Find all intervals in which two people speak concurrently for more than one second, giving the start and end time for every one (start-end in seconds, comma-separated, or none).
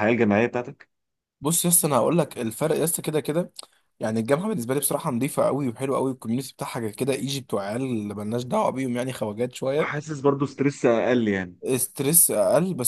none